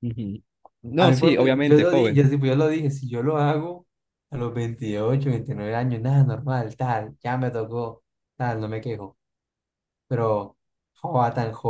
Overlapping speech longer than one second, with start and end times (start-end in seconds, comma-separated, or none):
1.0-2.2